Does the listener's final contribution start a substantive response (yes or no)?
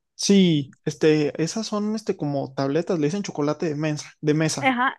yes